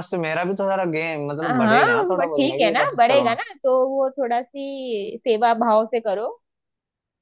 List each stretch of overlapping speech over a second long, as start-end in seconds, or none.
1.4-3.3